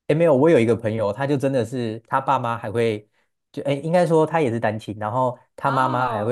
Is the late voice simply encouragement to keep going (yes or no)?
yes